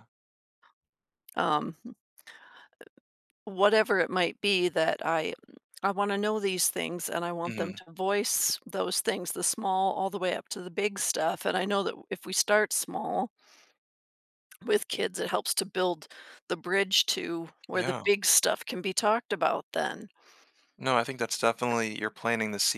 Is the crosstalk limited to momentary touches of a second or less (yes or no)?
yes